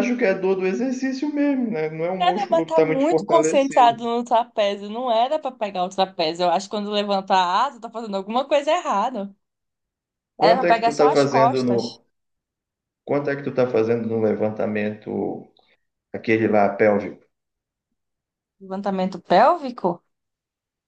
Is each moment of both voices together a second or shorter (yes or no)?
no